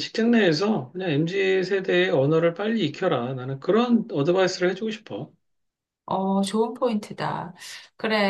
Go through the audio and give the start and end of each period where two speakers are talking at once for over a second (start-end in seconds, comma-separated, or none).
none